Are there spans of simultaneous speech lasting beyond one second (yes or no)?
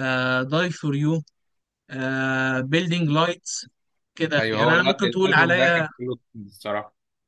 yes